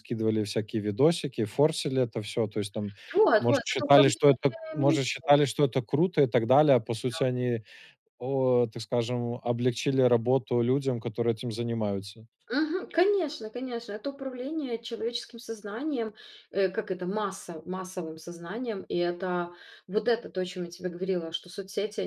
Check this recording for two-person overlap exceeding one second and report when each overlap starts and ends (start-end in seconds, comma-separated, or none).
3.4-5.0